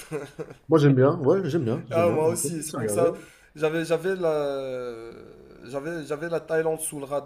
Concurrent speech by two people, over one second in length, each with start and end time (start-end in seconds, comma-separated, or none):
1.9-3.1